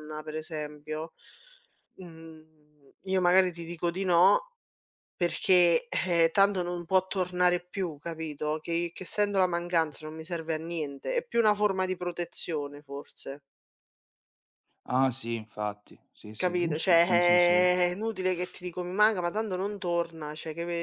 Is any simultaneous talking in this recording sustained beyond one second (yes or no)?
yes